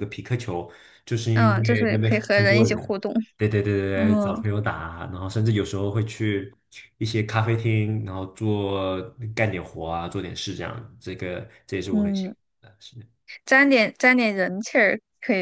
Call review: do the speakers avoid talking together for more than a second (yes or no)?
no